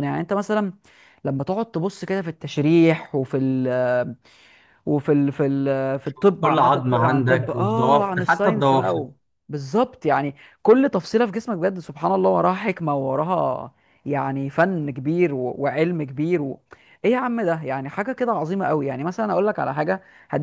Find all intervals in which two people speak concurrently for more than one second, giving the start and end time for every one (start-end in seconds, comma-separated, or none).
6.4-9.0